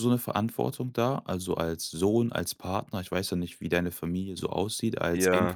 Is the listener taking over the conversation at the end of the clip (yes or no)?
yes